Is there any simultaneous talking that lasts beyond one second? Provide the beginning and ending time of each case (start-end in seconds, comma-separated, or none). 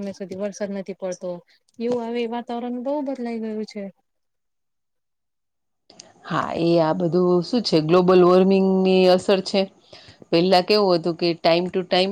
none